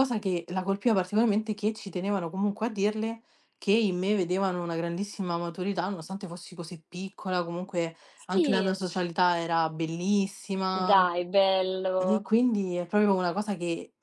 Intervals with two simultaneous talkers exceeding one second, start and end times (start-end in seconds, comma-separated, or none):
none